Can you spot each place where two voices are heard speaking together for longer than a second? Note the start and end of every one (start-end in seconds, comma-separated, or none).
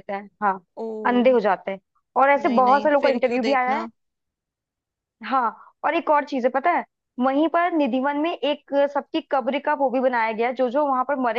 2.4-3.9